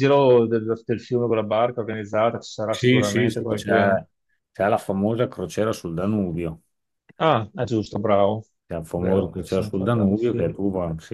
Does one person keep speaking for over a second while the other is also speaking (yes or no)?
yes